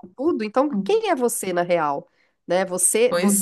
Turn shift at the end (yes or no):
no